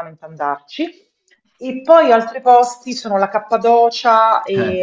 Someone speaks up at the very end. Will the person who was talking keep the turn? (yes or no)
yes